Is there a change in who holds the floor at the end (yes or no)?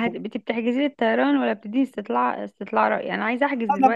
yes